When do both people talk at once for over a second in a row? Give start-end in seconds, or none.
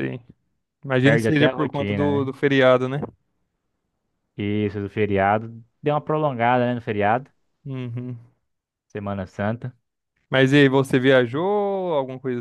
1.0-2.3